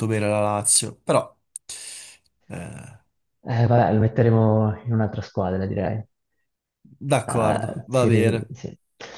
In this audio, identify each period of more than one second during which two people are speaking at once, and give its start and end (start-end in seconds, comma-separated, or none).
7.2-8.5